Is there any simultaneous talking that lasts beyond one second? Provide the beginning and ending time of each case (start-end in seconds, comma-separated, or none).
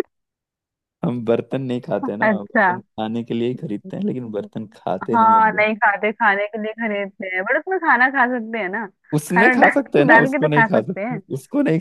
9.3-11.2